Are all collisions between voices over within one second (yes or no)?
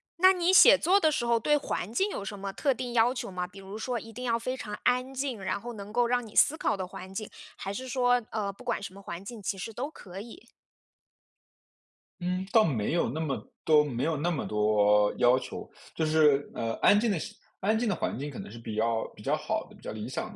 yes